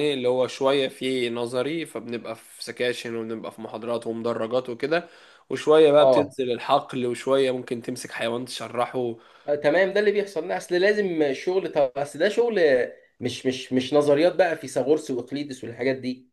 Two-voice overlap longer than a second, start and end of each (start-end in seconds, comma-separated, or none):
none